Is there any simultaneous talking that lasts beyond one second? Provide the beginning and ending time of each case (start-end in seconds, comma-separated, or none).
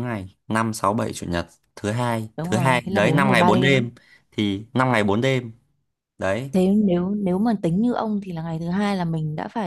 2.4-3.8